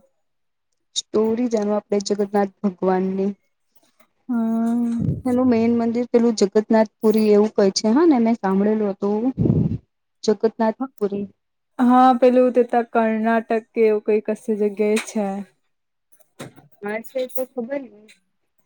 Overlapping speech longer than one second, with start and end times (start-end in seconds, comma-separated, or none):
none